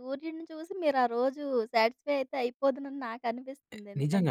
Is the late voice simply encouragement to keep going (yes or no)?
no